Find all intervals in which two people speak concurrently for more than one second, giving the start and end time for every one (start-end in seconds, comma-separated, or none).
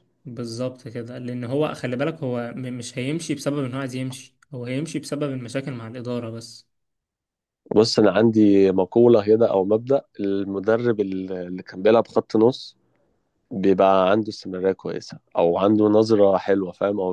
none